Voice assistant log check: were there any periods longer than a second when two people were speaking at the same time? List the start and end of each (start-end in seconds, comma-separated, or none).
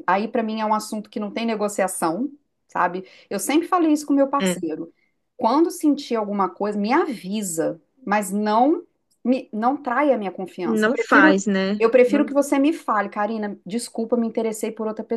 10.6-12.3